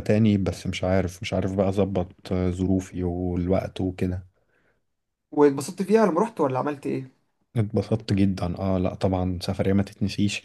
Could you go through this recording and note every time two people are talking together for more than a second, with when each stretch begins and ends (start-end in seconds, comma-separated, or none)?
none